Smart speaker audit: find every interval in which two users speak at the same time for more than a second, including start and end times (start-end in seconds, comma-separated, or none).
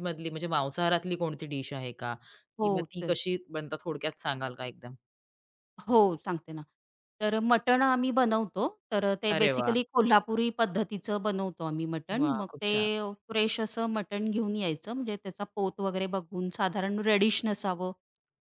none